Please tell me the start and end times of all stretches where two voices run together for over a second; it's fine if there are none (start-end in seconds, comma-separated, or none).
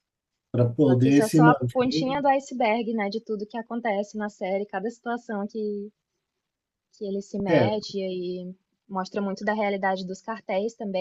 0.8-2.2